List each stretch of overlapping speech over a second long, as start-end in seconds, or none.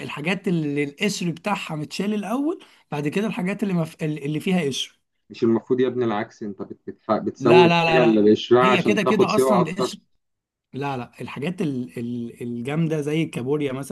7.4-9.9